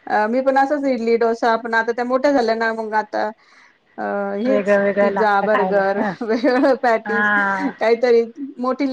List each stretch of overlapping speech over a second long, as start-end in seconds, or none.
4.5-6.1